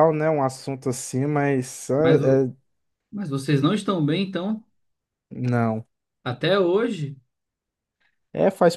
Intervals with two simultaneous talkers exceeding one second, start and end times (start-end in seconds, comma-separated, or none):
none